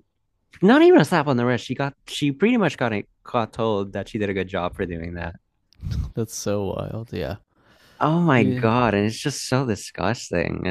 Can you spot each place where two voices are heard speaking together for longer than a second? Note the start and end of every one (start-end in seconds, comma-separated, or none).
none